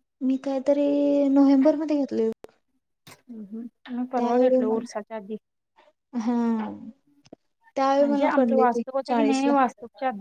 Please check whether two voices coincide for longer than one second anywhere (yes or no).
no